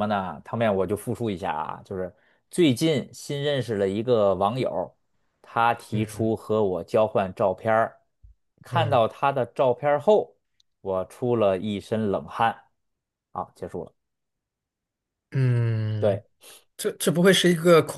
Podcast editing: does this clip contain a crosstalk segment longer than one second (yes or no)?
no